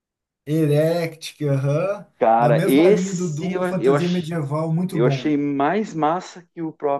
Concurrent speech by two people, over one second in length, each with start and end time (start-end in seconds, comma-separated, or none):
2.4-4.3